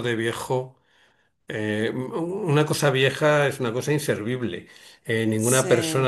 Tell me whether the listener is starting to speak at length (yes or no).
no